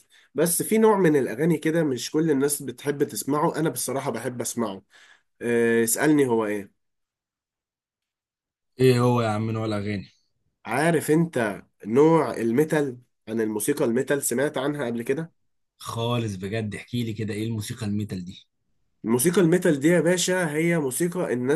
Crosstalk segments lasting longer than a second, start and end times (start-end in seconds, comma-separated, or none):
none